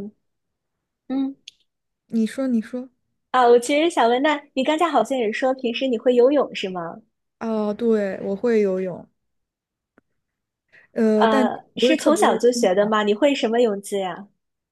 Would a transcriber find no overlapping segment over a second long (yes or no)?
no